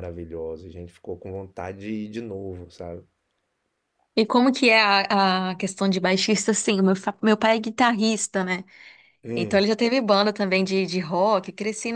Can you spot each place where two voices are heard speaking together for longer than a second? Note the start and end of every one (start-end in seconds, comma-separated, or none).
none